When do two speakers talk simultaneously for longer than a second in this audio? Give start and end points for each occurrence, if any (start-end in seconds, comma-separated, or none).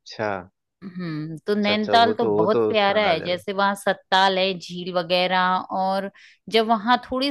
1.6-3.4